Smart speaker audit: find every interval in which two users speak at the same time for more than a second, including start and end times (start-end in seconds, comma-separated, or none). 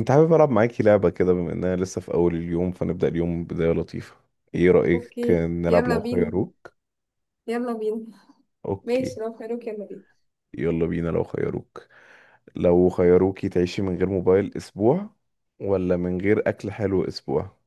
4.9-6.3